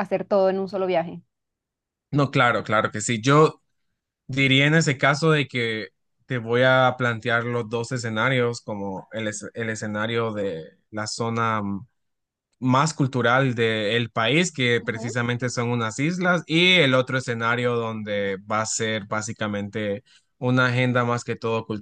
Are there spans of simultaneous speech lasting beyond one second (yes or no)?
no